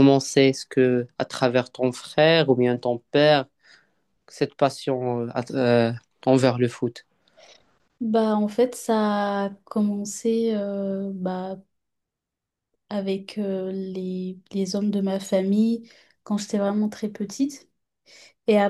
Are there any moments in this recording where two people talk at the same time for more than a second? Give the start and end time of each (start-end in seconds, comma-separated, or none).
none